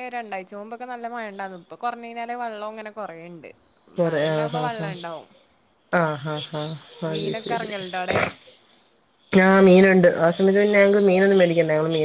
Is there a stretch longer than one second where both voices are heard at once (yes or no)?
no